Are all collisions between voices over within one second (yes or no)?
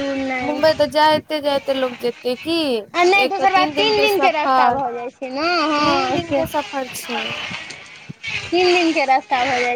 no